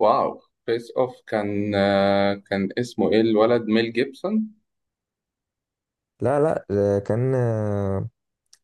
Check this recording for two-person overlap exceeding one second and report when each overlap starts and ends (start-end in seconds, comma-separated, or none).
none